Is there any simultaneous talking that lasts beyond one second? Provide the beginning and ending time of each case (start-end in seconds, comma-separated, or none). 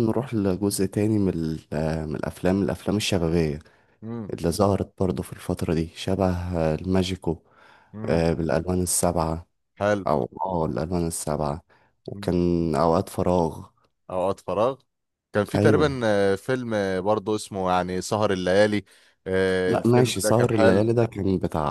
19.7-20.9